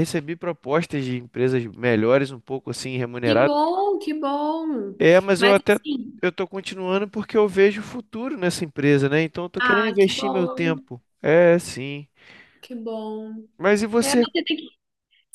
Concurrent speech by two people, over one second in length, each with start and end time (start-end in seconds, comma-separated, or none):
9.6-10.9